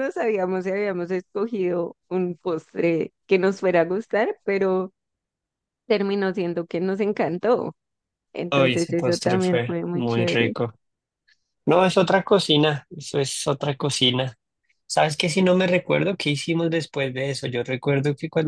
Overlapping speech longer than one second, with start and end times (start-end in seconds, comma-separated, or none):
8.5-10.5